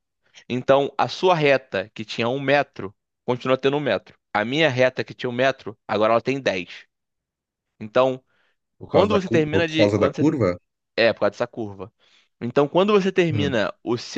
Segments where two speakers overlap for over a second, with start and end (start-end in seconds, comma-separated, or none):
8.9-10.2